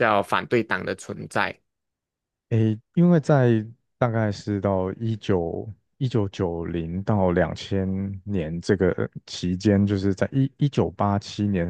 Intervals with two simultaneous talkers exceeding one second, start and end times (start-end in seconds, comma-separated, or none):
none